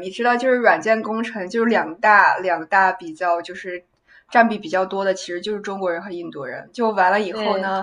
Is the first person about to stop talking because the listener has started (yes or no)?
no